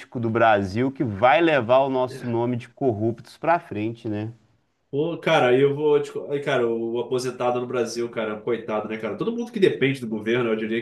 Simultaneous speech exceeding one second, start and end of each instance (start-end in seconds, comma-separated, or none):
none